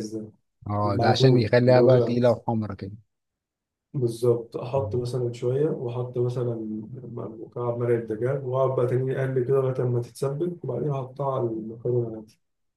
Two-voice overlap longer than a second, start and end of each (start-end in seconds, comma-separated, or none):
0.8-2.2